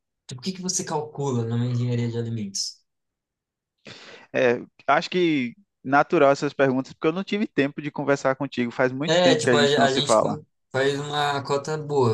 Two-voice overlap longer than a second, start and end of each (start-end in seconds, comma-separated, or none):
9.0-10.4